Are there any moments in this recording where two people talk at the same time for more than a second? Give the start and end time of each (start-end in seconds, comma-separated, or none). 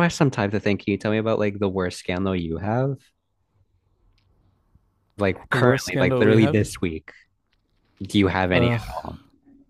5.5-6.7